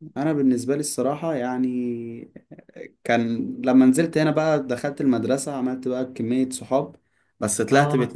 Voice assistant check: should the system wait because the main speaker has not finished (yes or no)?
yes